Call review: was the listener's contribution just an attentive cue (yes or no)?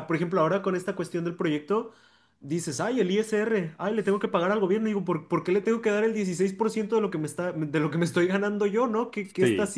yes